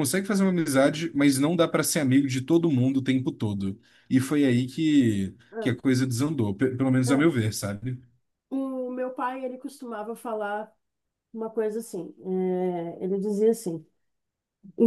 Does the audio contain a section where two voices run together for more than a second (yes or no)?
no